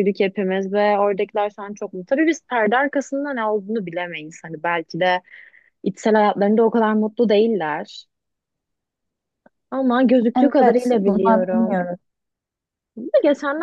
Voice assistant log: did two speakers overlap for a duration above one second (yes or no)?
yes